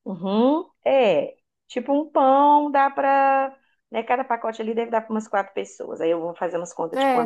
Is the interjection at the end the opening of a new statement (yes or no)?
yes